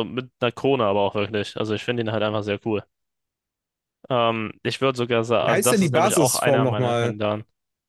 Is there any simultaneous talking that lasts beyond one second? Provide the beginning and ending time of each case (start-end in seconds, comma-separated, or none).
5.4-7.2